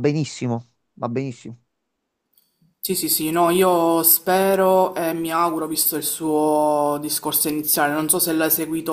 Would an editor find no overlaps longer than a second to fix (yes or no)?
yes